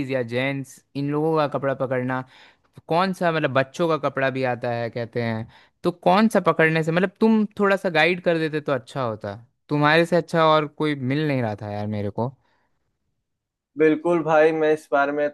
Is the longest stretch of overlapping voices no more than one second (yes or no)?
yes